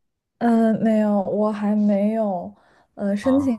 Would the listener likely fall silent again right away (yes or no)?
yes